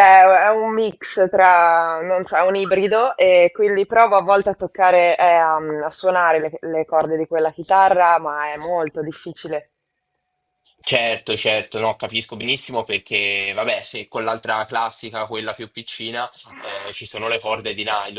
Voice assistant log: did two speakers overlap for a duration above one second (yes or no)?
no